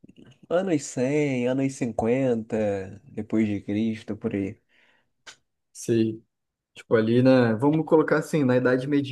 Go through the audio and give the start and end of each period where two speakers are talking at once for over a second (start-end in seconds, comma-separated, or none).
none